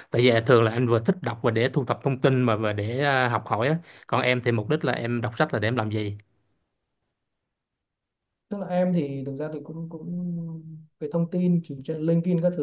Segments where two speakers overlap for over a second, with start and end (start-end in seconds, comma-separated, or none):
none